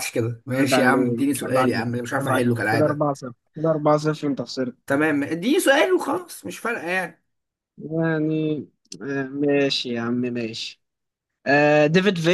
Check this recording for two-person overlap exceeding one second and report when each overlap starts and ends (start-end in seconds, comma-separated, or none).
0.6-3.1